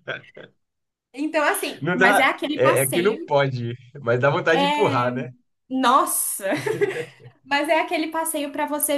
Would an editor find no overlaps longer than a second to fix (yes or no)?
no